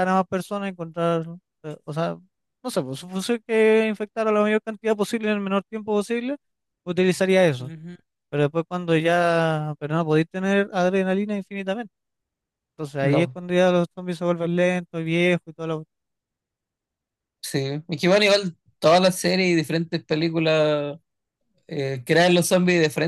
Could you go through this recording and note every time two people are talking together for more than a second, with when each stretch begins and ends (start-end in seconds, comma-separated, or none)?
none